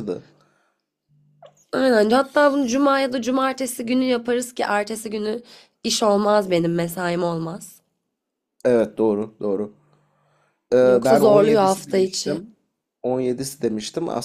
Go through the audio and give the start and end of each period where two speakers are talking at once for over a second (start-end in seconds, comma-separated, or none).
10.8-12.4